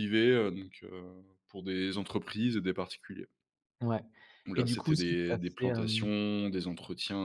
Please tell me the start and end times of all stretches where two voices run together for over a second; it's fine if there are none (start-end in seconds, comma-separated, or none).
4.5-6.1